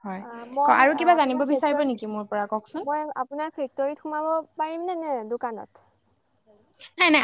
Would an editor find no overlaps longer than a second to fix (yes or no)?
no